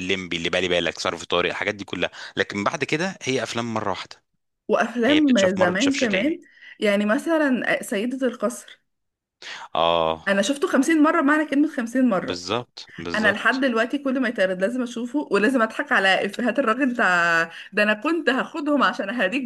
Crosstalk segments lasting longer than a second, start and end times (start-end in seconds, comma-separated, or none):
5.0-6.4